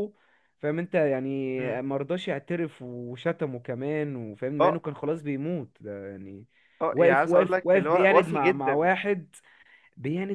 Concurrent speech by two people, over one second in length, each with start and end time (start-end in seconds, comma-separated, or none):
6.9-8.9